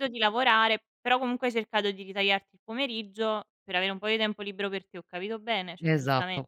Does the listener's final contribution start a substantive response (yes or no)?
yes